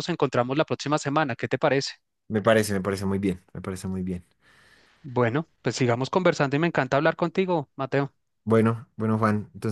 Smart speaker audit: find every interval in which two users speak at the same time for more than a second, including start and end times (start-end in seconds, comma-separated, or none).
none